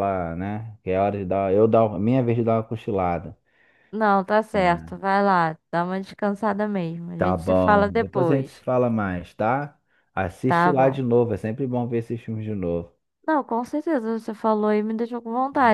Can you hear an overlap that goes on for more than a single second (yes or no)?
yes